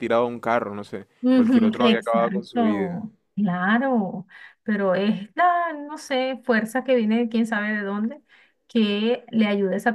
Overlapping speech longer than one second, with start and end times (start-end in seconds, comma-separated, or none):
1.2-3.0